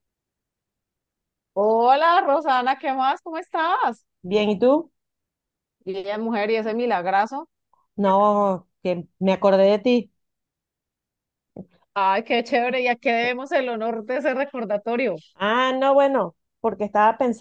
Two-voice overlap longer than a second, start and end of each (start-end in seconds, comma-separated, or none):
none